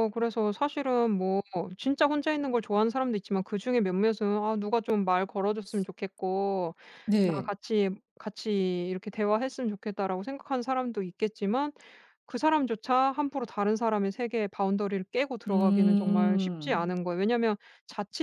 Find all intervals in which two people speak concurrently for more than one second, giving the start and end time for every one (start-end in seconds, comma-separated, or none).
15.5-16.9